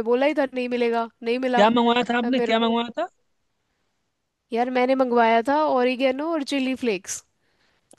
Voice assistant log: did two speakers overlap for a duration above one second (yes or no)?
no